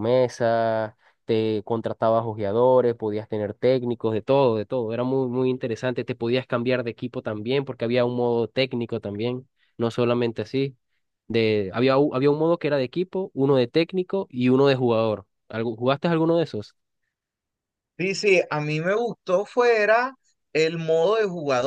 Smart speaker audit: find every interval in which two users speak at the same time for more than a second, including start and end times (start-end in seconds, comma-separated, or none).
none